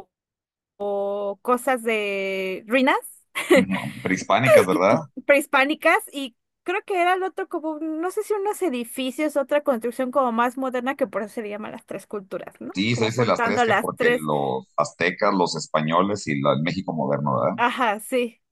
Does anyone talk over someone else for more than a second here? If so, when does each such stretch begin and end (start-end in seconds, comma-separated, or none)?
12.7-14.3